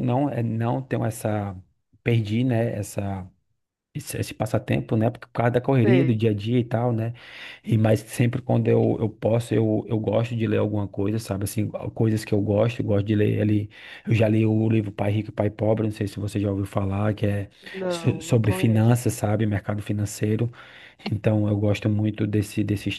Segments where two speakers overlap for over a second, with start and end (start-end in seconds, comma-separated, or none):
17.9-19.1